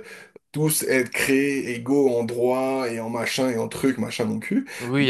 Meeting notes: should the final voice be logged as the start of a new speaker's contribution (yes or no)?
yes